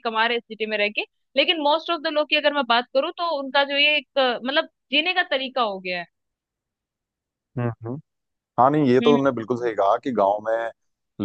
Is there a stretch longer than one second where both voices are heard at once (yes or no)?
no